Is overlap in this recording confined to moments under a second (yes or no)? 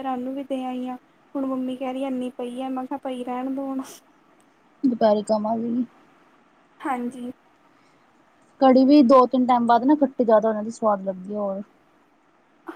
yes